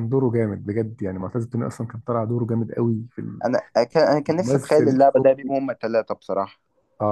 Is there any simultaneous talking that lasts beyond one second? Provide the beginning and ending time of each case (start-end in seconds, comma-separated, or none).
4.3-5.6